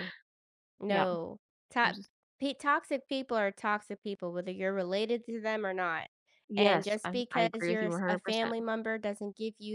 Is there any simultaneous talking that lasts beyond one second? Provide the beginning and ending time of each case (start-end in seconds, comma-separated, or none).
6.6-8.7